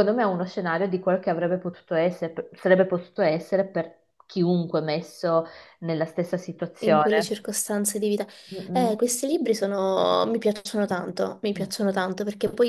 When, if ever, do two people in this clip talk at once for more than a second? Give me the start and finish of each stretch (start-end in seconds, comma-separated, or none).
none